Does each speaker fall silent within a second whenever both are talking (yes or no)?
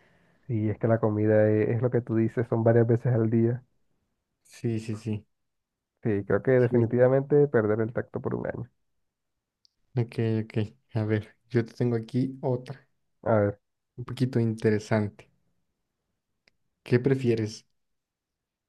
yes